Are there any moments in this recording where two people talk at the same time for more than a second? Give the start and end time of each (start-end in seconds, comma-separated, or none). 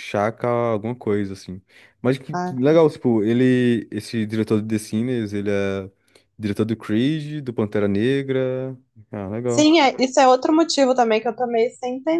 none